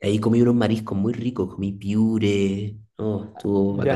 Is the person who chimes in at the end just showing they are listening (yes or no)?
no